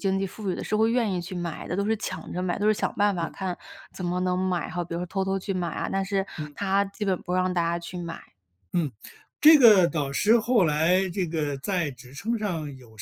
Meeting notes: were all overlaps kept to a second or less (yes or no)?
yes